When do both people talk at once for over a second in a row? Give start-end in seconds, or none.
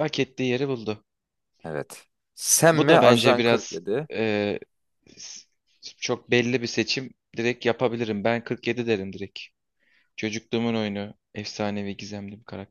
2.7-4.1